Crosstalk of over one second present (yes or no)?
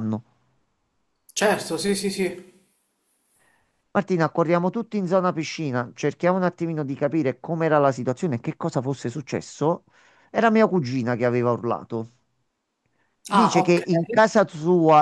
no